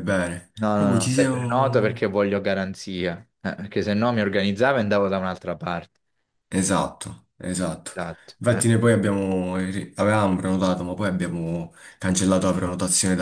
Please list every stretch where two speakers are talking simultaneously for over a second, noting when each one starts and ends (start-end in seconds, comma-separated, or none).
0.6-2.1